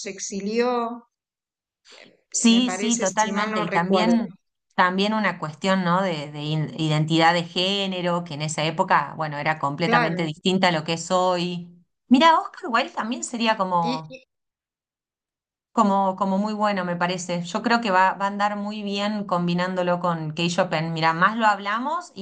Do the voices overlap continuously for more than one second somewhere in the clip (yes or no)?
yes